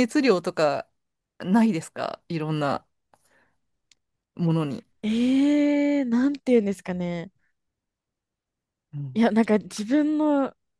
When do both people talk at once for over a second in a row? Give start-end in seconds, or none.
none